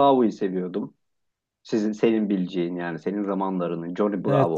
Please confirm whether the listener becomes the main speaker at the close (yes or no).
yes